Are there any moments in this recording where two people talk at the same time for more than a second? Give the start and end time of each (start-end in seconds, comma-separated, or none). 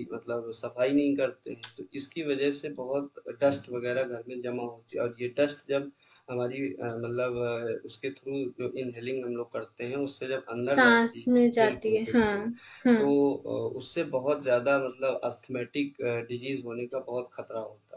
10.6-12.3